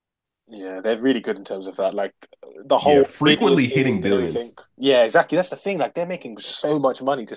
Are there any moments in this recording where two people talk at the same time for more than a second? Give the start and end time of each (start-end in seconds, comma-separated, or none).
2.8-4.5